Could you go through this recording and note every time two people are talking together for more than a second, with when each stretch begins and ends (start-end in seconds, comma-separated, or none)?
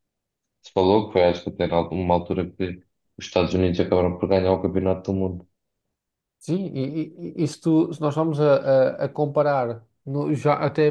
none